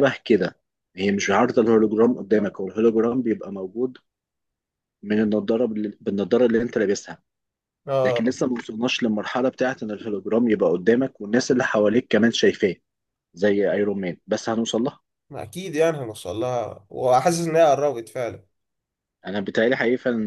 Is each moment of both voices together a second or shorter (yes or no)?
yes